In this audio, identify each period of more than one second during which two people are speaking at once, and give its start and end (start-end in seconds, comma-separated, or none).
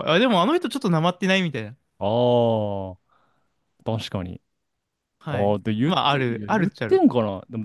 5.3-7.0